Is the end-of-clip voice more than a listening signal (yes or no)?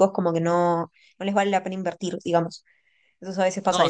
yes